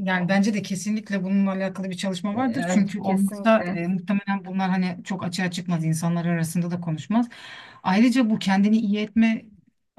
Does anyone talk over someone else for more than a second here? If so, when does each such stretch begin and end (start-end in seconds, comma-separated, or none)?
2.3-3.8